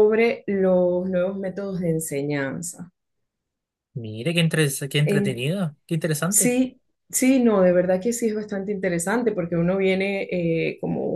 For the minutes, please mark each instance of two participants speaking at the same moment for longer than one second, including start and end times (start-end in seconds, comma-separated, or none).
none